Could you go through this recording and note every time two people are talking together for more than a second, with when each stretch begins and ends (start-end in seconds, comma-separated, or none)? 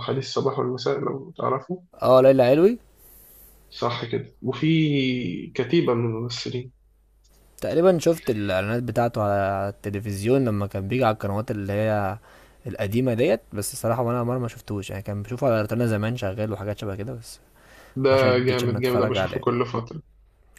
18.1-19.4